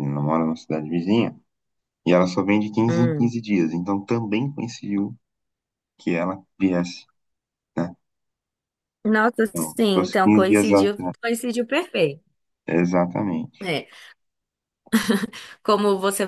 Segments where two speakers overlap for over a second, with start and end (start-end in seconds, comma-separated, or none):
9.5-10.8